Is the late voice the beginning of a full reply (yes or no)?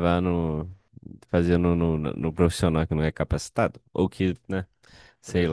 yes